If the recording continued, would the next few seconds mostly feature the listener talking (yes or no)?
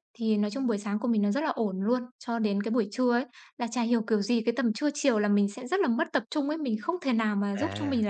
no